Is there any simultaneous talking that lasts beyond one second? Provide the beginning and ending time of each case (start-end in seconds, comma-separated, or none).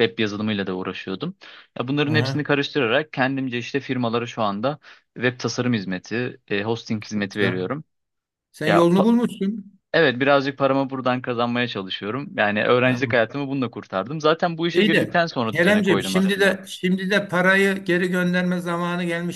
14.7-16.7